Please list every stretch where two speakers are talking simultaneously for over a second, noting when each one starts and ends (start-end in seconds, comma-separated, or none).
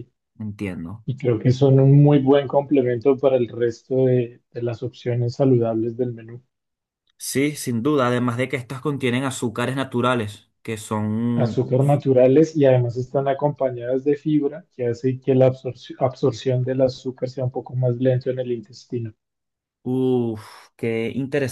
none